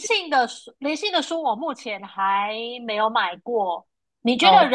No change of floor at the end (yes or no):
yes